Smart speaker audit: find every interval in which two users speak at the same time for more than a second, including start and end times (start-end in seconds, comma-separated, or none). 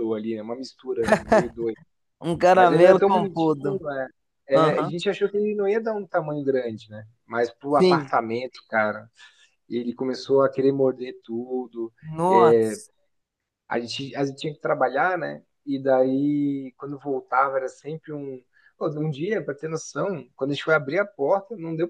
2.5-3.8